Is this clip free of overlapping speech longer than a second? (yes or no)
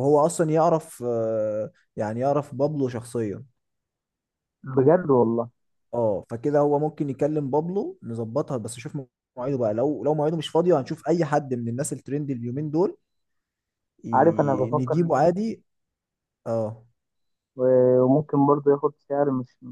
no